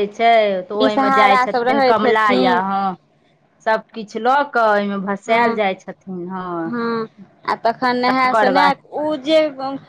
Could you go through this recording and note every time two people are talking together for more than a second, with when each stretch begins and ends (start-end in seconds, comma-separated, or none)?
0.8-2.6